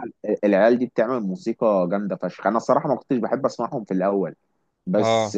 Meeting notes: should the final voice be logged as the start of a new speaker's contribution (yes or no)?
no